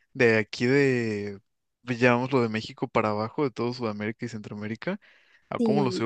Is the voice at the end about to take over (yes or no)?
no